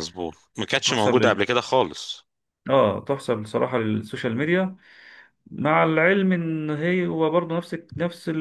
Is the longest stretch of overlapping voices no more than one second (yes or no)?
yes